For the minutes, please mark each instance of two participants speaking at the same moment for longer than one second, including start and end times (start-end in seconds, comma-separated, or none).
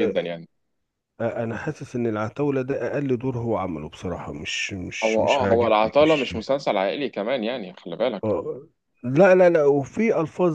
5.0-6.3